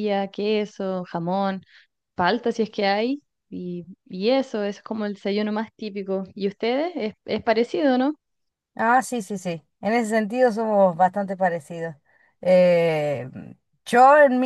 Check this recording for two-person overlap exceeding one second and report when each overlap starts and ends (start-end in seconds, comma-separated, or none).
none